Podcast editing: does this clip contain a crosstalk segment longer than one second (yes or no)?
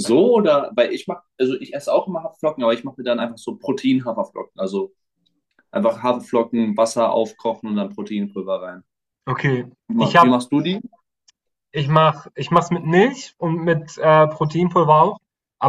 no